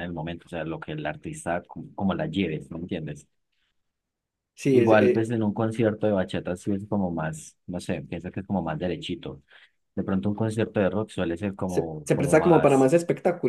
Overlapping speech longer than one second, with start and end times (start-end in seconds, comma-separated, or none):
11.7-12.9